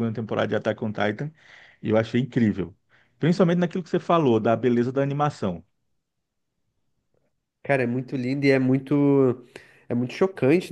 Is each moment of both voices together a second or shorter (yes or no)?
yes